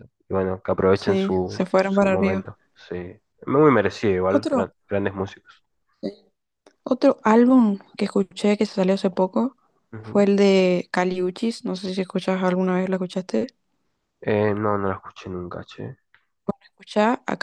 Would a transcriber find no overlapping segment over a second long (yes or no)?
no